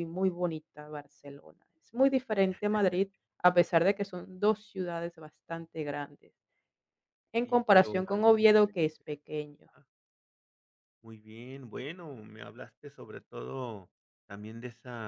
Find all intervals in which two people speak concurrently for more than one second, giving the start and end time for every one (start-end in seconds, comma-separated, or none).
7.4-9.0